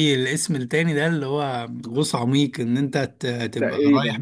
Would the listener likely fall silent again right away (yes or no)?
yes